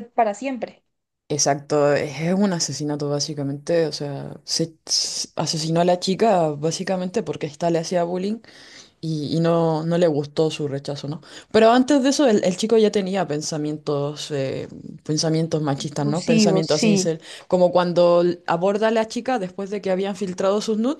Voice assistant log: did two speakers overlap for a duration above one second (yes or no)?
yes